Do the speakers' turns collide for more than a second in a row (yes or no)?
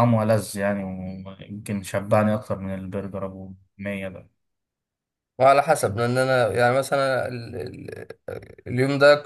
no